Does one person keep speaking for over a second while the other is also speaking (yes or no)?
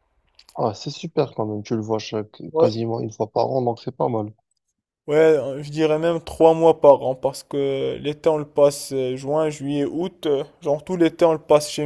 no